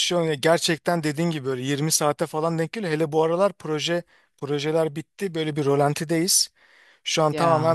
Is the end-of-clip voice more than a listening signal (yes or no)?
no